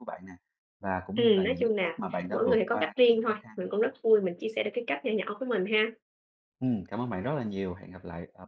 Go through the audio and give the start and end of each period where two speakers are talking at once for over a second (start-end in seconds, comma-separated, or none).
1.1-4.0